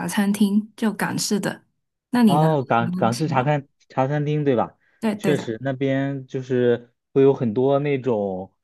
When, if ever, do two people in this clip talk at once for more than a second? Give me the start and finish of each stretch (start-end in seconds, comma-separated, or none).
2.2-3.5